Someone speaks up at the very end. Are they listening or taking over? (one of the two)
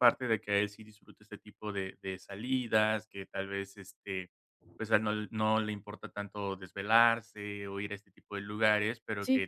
listening